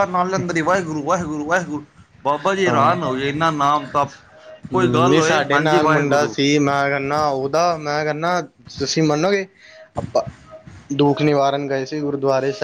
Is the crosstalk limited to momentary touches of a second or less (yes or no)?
no